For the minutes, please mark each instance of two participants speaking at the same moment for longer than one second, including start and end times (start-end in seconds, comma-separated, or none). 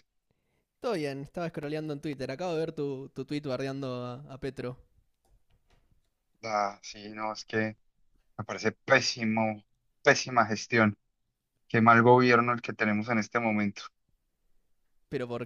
none